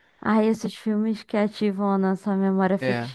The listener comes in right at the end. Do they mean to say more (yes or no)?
yes